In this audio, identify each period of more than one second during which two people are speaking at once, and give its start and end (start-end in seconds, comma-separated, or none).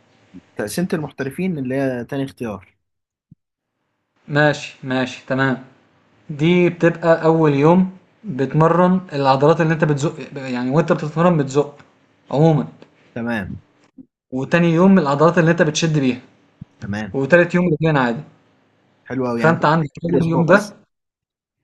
19.4-20.7